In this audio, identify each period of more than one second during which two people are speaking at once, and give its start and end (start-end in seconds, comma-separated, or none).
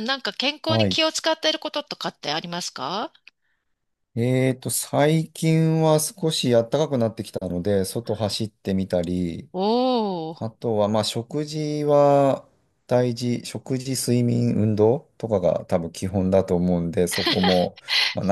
none